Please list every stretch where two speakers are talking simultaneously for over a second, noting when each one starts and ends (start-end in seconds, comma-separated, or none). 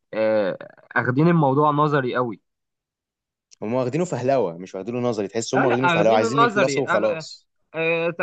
5.5-7.2